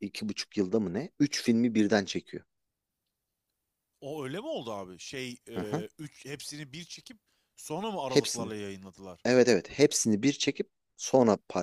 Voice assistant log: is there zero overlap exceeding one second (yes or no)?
yes